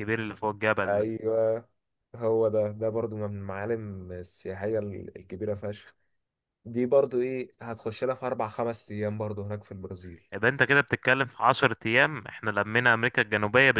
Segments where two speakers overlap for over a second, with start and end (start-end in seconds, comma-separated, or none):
none